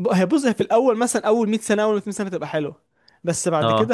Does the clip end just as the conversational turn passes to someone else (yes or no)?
no